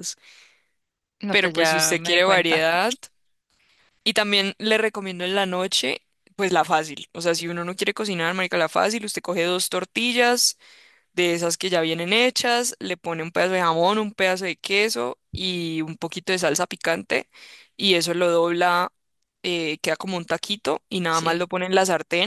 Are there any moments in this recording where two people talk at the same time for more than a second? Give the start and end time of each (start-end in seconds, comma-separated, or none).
1.3-2.6